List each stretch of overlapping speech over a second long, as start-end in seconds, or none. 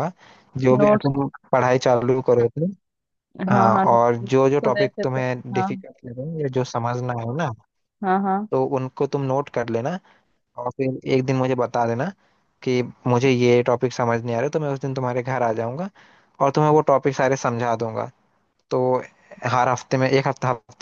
3.5-5.7